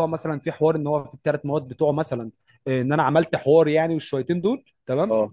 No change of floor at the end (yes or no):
yes